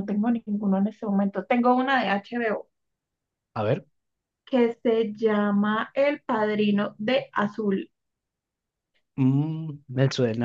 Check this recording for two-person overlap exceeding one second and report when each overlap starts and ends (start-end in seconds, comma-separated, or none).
none